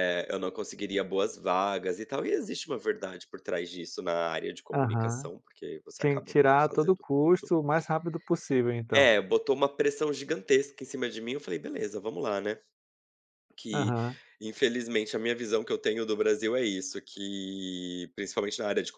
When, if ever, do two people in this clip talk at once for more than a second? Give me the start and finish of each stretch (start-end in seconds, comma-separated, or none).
6.0-7.5